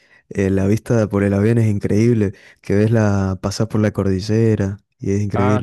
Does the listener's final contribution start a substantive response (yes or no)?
yes